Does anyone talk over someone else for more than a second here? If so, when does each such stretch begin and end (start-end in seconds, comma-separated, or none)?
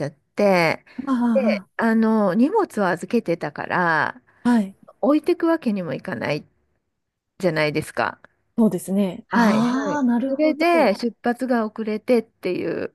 9.3-10.9